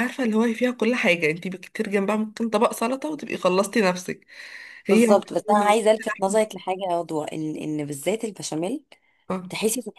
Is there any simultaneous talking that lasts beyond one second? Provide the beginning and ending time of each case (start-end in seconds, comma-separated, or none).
4.9-6.5